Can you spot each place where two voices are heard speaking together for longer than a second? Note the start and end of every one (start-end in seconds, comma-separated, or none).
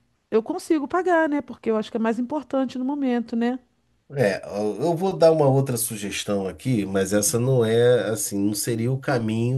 none